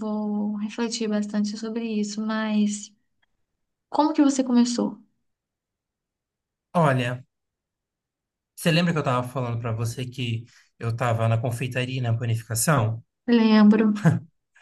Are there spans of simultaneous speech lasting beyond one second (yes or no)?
no